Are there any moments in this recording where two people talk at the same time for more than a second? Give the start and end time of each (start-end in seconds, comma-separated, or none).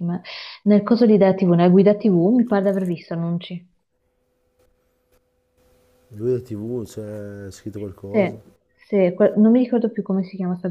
none